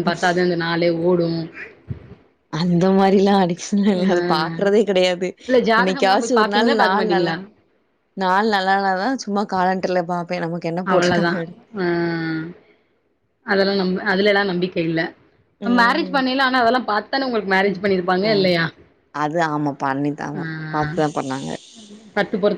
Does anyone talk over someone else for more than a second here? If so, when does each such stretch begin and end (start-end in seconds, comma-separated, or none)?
5.8-7.3